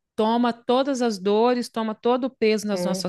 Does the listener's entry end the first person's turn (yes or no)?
no